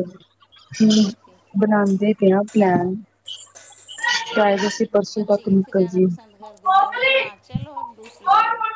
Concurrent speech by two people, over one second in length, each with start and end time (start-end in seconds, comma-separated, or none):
4.3-6.1